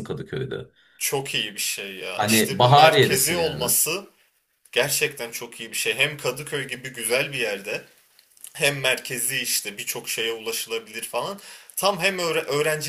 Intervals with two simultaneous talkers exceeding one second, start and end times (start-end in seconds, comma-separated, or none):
2.2-3.7